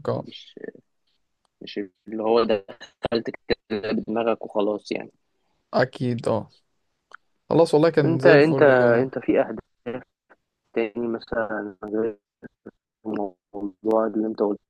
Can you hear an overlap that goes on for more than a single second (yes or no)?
no